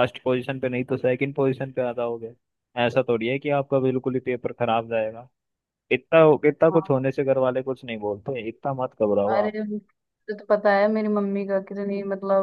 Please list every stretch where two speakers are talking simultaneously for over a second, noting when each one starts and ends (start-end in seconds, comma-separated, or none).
none